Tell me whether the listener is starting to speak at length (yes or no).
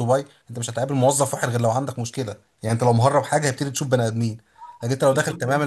no